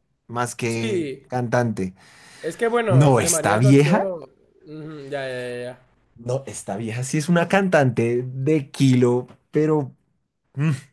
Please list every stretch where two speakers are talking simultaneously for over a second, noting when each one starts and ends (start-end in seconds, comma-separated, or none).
2.9-4.1